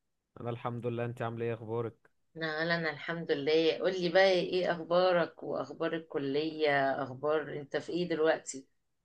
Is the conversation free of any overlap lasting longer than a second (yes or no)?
yes